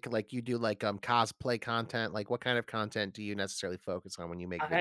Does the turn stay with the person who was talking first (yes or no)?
no